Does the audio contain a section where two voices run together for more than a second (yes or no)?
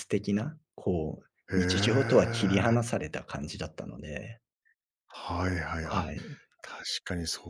yes